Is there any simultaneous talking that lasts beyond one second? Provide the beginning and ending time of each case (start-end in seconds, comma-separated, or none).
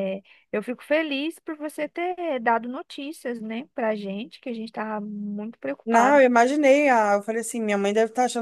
none